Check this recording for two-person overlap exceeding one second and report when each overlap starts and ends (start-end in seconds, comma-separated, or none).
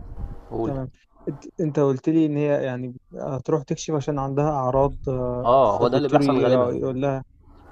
5.4-6.8